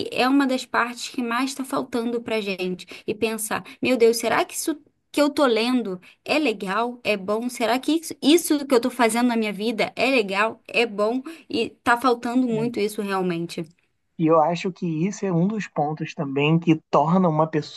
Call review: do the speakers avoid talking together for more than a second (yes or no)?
yes